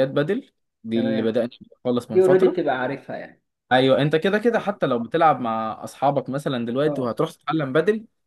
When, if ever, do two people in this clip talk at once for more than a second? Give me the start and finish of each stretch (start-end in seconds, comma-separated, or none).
none